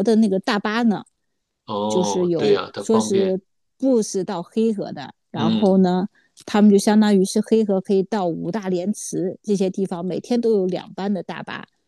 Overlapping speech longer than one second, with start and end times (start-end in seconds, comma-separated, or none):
1.9-3.4